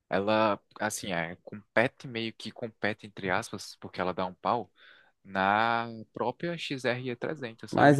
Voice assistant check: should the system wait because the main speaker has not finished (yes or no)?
no